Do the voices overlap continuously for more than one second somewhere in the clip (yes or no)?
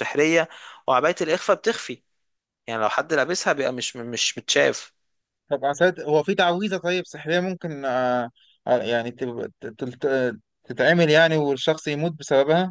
no